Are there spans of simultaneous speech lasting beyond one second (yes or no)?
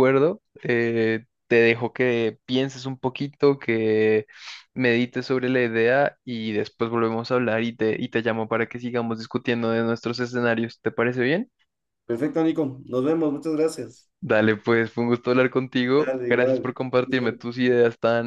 yes